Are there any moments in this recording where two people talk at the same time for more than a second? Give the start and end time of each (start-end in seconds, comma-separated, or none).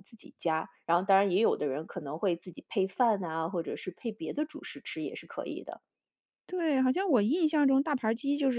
none